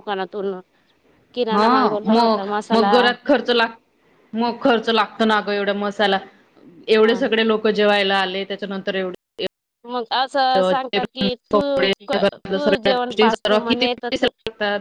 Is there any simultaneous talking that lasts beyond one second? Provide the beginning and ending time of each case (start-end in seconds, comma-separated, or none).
12.5-14.3